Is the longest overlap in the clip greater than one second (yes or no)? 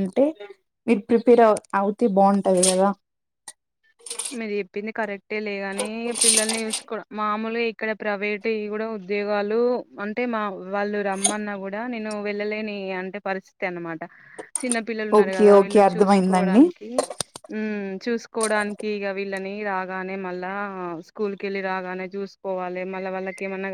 yes